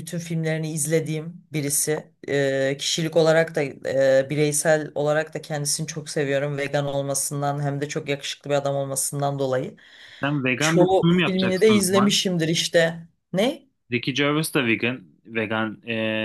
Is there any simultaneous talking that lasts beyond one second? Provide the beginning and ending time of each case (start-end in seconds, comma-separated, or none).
10.6-12.2